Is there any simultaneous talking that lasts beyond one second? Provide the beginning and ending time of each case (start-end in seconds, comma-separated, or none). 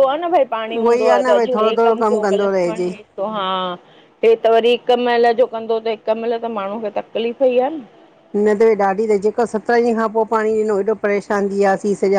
0.7-2.9